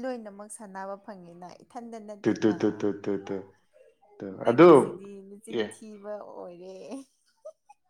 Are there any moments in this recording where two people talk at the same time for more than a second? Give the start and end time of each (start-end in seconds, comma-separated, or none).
none